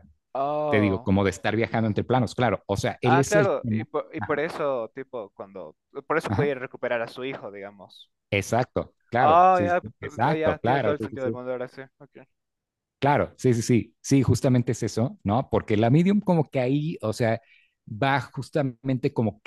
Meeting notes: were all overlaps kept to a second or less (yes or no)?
no